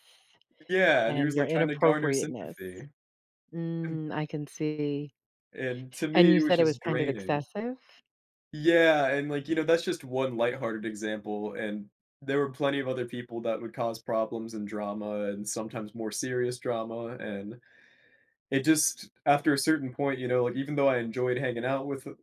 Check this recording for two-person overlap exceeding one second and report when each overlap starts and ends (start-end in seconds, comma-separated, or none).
1.1-2.6, 6.1-7.4